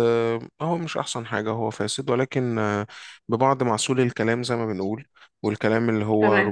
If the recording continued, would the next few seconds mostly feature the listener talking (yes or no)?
no